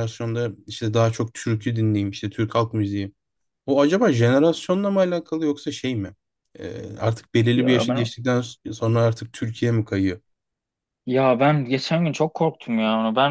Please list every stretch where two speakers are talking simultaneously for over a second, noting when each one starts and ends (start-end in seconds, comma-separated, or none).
none